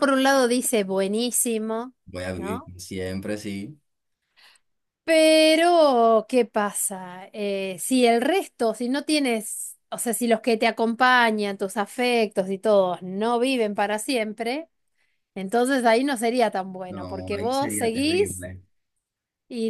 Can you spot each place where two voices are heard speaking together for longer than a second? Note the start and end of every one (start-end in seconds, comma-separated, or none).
16.9-18.5